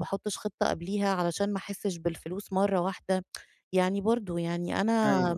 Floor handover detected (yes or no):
no